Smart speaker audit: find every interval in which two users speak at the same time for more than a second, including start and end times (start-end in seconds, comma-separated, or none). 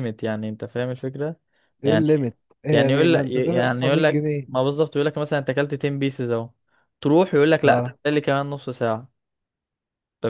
2.7-4.5